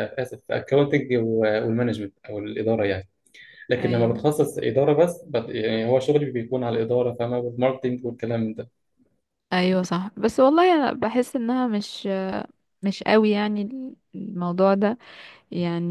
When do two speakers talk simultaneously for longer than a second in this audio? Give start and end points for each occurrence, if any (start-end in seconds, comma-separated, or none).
none